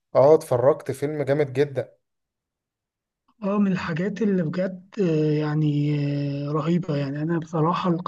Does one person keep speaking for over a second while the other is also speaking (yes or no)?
no